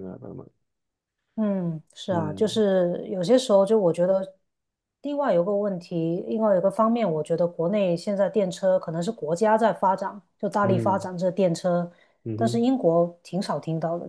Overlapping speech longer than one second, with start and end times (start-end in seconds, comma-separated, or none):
none